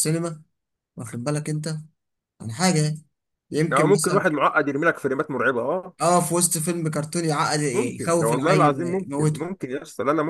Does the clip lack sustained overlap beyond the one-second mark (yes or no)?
no